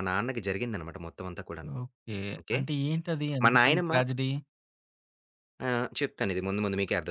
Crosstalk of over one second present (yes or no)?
no